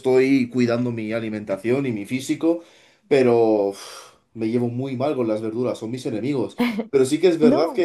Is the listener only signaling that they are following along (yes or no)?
yes